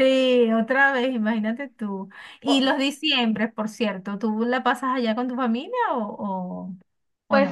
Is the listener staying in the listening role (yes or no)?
no